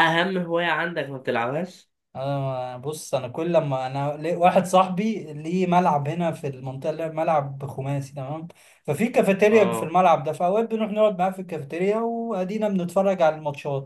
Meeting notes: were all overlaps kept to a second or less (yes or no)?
yes